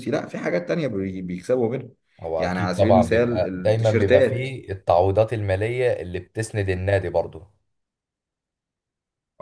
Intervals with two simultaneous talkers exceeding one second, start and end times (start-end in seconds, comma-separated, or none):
2.4-4.6